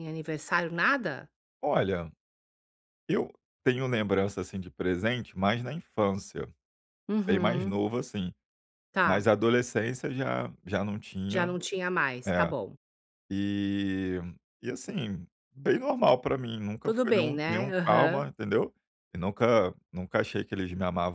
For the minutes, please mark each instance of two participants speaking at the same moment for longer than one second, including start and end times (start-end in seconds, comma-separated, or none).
16.8-18.2